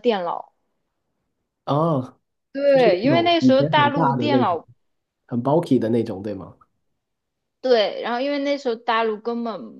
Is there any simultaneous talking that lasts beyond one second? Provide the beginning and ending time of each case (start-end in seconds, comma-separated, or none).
2.8-4.6